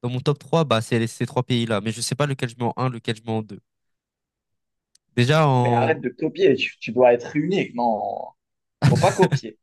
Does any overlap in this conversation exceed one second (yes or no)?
no